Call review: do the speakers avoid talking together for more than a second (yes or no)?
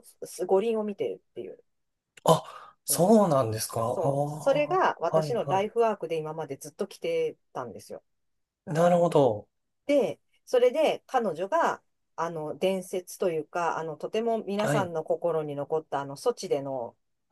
no